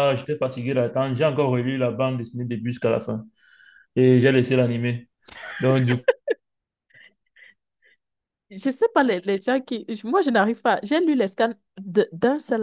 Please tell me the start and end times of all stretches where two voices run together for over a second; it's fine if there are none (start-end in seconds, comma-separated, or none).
none